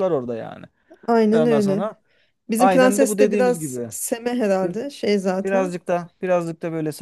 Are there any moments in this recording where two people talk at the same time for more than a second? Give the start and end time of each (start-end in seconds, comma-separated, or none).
2.6-3.9